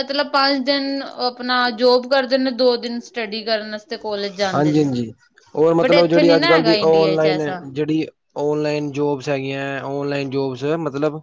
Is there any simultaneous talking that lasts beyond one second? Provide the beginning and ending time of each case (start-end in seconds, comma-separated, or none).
5.8-7.6